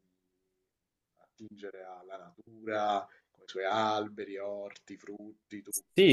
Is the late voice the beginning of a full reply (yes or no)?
yes